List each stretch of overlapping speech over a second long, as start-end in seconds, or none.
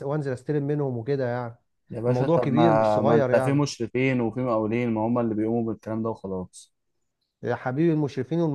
2.1-3.6